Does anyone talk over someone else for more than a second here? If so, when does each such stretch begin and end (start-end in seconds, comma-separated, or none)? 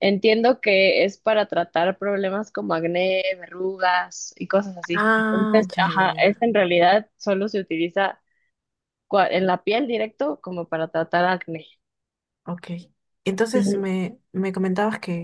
4.9-6.5